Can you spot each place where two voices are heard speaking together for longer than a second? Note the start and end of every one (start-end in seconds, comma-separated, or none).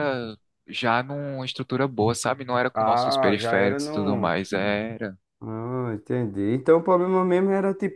2.7-4.3